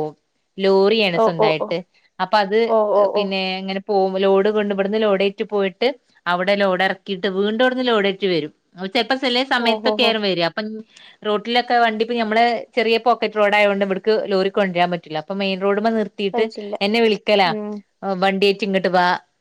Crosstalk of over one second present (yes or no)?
no